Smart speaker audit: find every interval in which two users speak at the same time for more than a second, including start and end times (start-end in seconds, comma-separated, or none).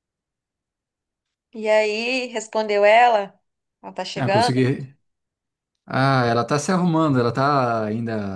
none